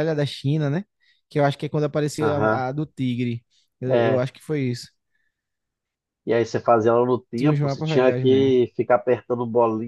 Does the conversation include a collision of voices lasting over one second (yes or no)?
yes